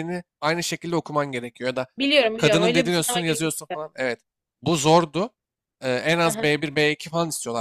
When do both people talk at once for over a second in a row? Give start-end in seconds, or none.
2.4-3.8